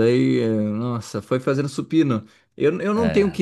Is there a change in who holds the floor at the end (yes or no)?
no